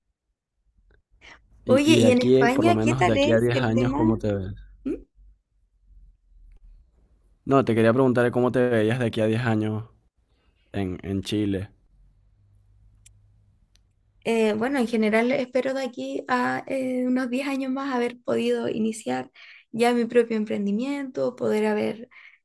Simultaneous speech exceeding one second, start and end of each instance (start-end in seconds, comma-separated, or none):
1.7-4.0